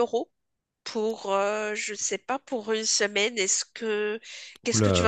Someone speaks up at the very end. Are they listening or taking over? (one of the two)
taking over